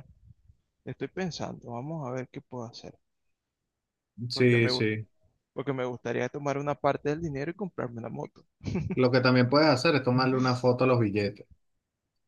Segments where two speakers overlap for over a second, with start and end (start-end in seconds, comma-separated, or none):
none